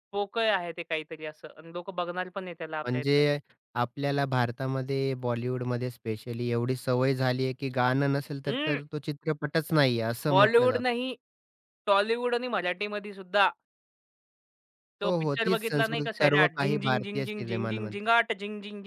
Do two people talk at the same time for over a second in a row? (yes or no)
yes